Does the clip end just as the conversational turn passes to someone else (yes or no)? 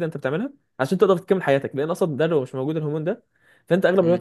no